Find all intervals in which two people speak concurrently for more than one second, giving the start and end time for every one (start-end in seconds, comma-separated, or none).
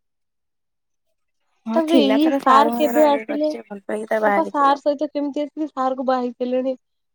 1.8-4.8